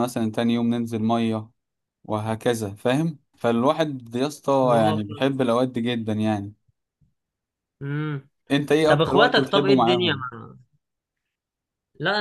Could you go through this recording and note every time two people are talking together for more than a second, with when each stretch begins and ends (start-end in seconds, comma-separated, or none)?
8.9-10.2